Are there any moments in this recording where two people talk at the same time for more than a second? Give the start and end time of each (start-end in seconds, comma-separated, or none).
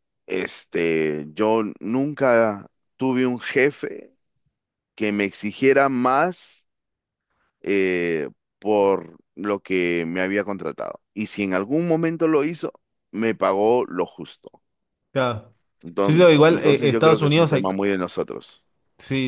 16.0-17.7